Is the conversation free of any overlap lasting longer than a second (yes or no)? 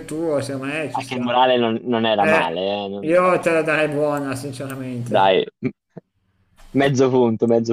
no